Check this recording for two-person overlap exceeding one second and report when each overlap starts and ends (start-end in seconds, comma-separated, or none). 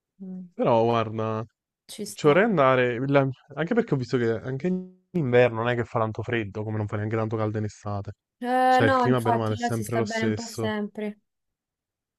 8.7-10.7